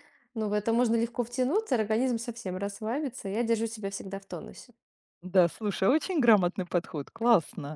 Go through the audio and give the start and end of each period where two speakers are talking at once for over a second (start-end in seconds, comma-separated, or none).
none